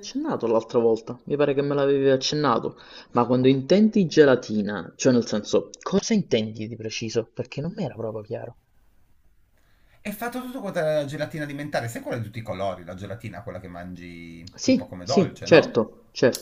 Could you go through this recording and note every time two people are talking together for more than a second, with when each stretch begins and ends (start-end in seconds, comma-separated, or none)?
14.6-15.8